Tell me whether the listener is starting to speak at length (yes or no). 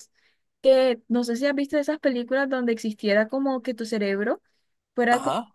no